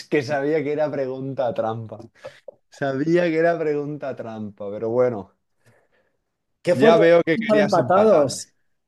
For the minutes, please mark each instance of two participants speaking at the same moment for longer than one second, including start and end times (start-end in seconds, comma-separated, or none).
6.7-8.3